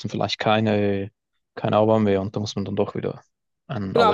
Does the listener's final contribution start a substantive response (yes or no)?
yes